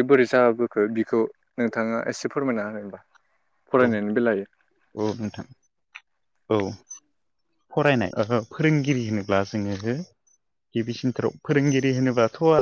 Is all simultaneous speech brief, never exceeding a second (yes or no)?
yes